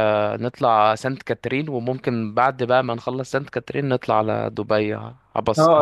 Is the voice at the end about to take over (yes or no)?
yes